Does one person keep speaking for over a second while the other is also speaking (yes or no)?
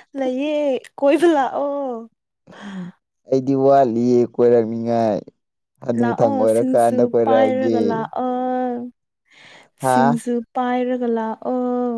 yes